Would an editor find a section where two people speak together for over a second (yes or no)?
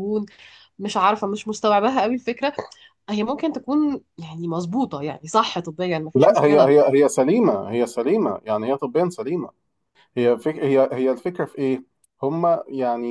no